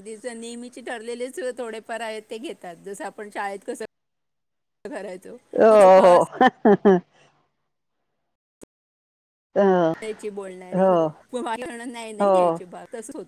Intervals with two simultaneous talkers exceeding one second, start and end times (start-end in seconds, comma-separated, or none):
none